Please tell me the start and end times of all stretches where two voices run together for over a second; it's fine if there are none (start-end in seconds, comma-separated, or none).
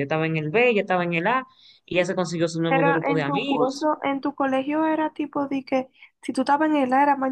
2.7-3.9